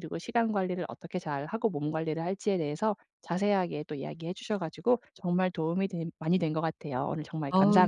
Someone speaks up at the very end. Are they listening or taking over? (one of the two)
taking over